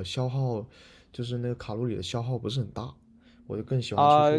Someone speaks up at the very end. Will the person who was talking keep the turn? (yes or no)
no